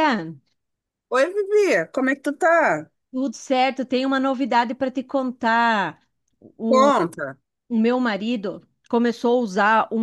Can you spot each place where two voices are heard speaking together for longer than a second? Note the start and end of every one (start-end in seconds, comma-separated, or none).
none